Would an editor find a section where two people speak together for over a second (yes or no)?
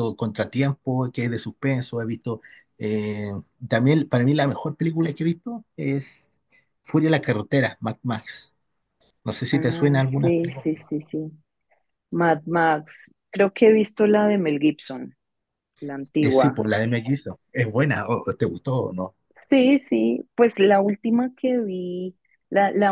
yes